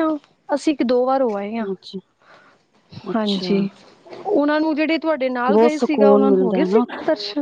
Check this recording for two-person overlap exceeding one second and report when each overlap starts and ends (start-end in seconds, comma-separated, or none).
5.5-6.8